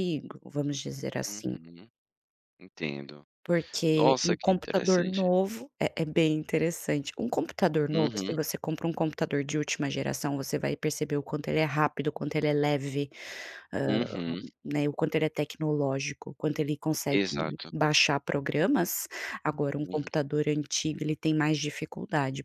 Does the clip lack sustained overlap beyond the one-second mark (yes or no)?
no